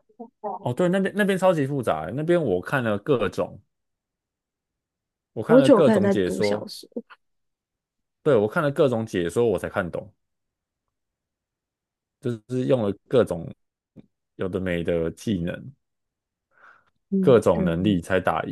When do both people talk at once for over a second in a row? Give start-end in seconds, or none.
5.5-6.7